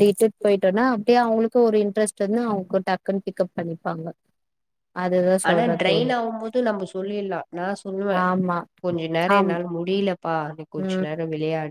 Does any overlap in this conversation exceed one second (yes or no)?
no